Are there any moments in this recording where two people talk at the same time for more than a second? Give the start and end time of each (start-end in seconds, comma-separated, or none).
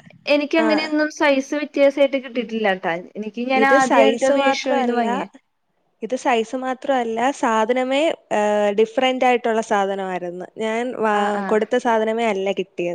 3.6-5.2